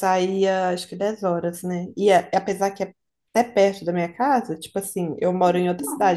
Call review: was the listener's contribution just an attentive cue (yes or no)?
yes